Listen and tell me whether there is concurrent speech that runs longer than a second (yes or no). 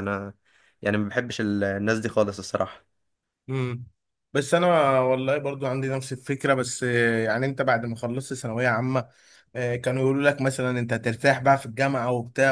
no